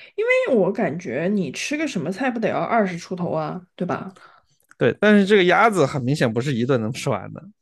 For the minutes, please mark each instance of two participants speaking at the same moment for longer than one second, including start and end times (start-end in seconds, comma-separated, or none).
none